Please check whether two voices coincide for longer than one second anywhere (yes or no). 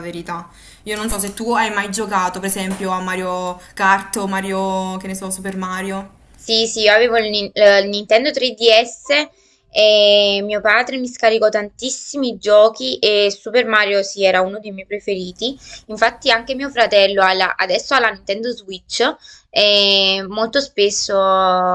no